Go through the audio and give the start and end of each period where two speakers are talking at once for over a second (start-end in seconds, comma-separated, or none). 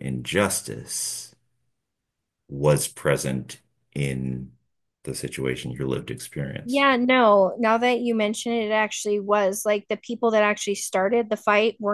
none